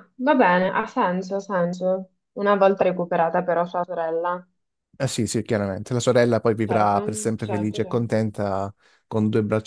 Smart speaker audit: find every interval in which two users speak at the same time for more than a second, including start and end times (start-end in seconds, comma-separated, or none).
6.7-8.3